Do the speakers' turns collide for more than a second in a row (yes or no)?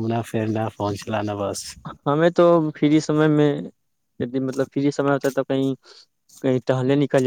no